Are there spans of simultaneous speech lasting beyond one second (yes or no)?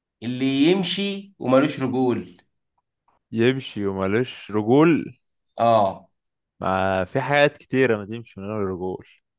no